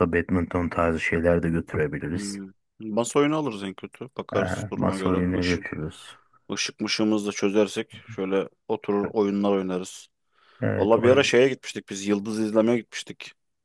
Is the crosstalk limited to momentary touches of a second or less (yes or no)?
no